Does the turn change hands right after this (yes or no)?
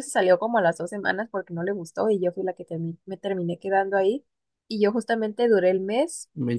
no